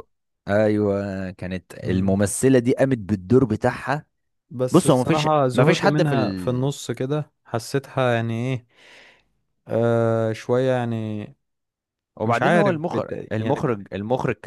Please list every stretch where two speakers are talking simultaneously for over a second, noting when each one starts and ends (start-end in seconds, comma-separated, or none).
4.7-6.2, 12.2-13.7